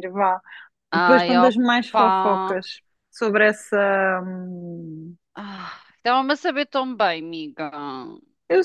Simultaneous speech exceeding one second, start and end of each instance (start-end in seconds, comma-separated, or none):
0.9-2.6